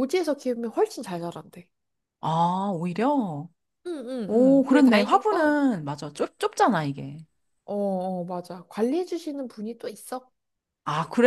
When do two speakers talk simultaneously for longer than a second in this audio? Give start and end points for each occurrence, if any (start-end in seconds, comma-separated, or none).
4.3-5.6